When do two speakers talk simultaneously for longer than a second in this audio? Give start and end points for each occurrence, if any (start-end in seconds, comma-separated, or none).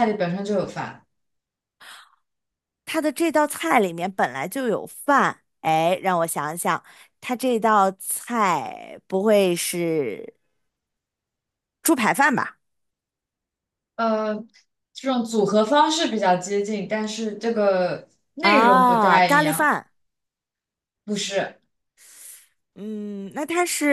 18.4-19.7